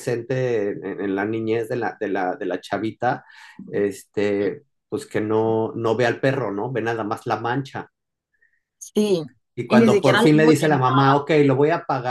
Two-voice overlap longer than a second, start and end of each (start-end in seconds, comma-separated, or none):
9.7-11.1